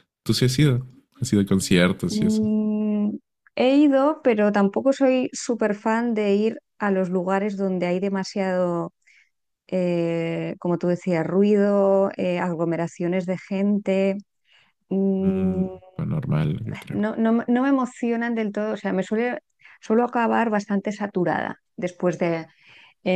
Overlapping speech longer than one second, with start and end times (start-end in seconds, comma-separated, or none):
none